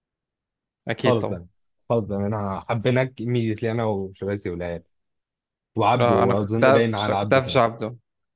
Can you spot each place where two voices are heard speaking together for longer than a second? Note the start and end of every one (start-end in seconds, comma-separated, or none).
6.0-7.6